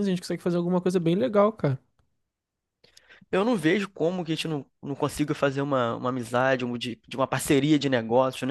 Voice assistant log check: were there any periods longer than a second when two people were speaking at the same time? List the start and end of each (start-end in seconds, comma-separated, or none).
none